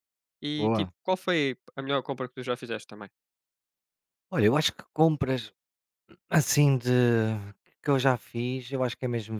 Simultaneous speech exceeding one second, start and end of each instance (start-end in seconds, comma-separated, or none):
none